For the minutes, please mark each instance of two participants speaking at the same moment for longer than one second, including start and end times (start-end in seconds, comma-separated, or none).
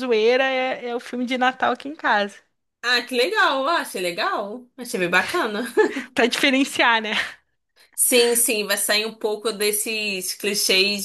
none